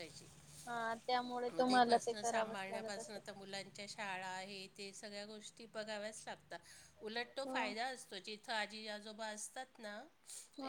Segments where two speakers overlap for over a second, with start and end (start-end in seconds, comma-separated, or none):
1.5-3.2